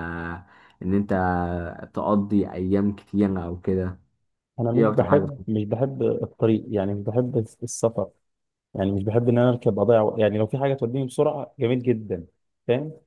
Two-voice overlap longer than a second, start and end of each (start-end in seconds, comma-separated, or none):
none